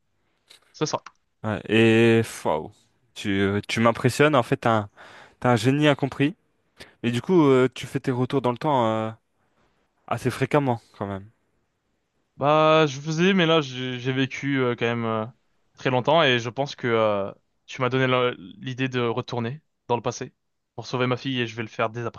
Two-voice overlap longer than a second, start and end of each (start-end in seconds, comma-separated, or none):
none